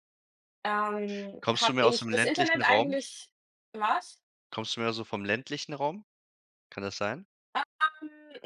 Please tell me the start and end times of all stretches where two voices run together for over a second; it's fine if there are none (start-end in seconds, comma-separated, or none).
1.4-3.0